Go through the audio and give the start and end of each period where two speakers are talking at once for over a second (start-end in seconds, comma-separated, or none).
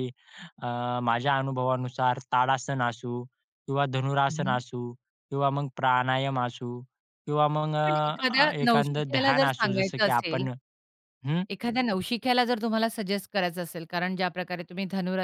7.7-10.4